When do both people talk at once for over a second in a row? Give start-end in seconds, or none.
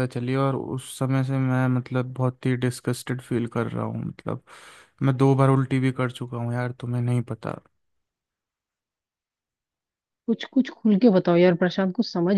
none